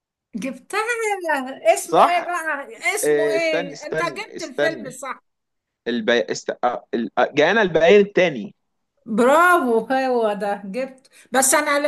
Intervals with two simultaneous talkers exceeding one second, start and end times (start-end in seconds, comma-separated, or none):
3.0-4.9